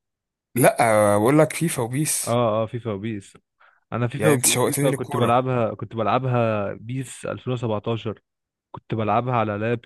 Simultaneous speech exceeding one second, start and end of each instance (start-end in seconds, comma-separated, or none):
4.2-5.5